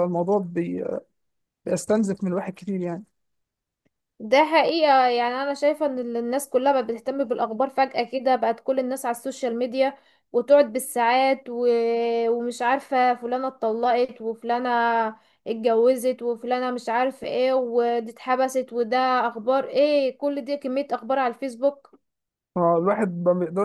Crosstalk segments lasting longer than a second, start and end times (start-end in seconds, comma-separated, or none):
none